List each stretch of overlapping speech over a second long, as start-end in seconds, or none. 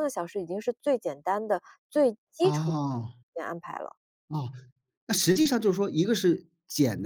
none